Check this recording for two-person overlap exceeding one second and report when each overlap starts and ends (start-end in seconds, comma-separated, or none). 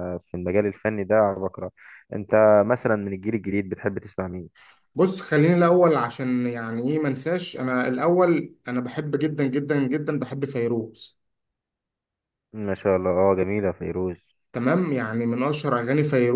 none